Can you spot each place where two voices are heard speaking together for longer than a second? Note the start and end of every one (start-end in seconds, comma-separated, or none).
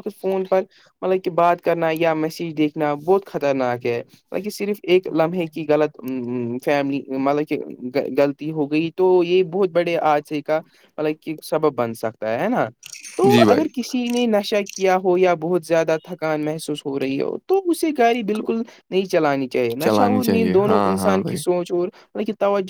19.8-21.4